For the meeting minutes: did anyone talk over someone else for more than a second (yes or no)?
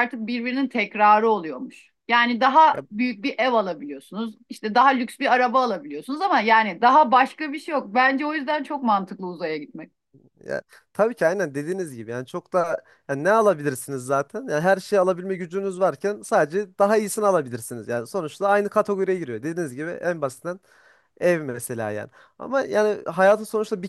no